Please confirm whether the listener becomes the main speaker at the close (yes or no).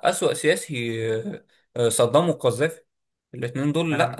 yes